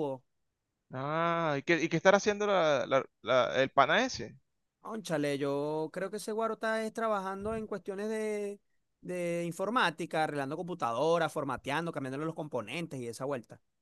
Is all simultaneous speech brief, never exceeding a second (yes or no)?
yes